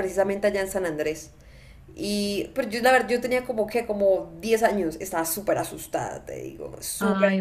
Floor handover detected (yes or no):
no